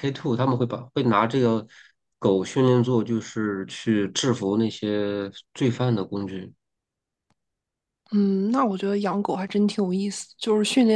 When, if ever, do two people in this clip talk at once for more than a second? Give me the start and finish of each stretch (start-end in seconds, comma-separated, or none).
none